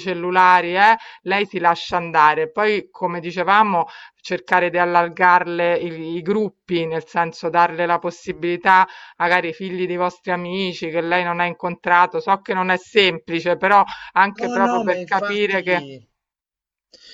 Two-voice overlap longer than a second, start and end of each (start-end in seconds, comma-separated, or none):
14.4-15.8